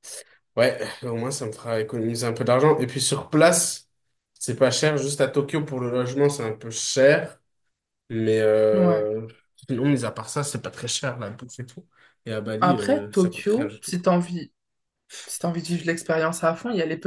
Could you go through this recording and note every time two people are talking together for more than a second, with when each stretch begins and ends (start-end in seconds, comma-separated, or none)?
12.6-13.9